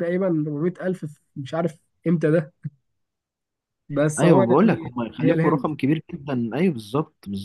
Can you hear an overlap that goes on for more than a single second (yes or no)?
yes